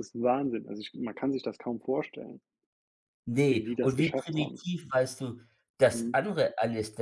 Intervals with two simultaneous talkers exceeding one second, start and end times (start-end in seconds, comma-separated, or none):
3.5-4.7